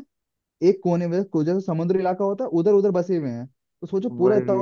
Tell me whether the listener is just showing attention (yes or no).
yes